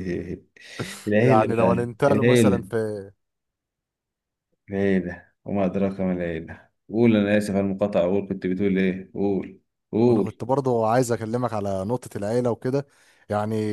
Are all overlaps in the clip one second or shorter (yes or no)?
no